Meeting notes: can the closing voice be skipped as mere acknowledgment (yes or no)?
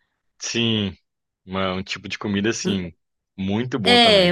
no